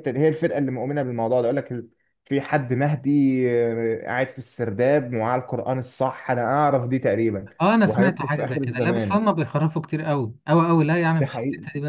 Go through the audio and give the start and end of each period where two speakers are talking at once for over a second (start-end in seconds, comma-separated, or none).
7.8-9.2